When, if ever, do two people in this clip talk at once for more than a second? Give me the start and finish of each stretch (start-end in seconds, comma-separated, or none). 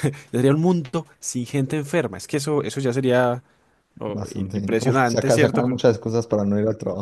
4.1-5.8